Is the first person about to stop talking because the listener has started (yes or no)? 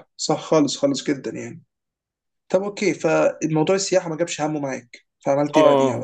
yes